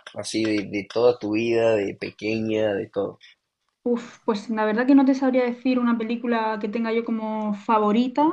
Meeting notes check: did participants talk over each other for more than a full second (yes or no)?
no